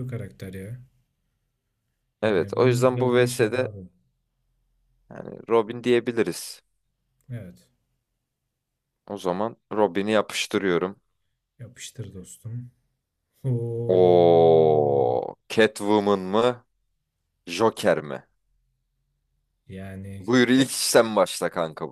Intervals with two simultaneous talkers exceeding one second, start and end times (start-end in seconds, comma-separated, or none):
2.2-3.7